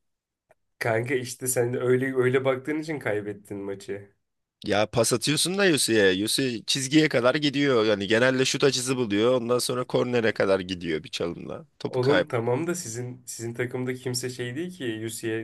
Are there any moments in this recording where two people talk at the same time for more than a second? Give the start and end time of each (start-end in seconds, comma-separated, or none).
none